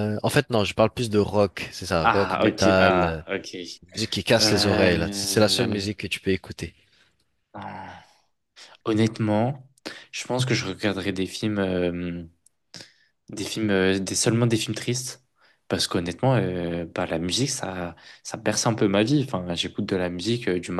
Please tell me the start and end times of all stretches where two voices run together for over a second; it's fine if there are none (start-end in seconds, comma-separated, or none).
2.0-3.2, 4.4-5.9